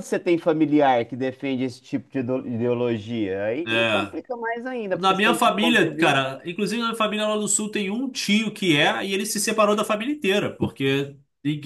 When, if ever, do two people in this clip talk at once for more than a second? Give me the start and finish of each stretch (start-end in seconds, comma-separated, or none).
4.9-6.2